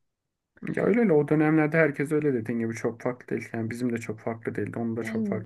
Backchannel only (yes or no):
no